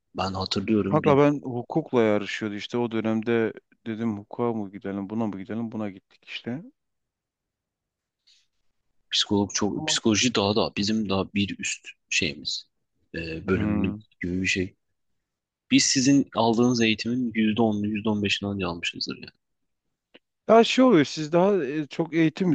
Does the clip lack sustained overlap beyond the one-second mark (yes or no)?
yes